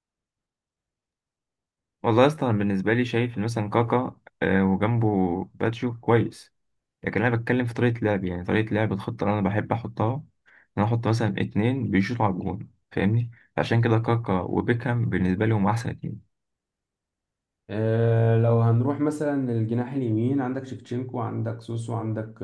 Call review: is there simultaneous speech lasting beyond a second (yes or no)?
no